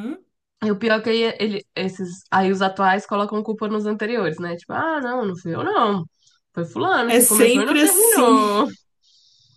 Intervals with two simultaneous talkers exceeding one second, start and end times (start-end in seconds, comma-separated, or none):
7.0-8.4